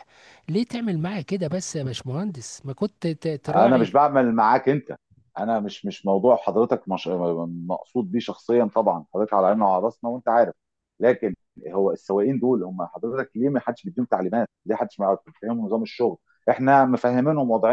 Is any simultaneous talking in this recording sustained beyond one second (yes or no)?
no